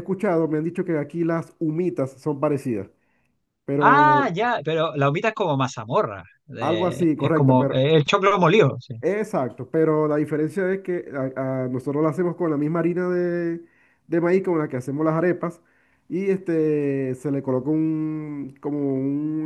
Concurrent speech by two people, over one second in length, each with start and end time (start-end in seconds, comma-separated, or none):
6.6-7.8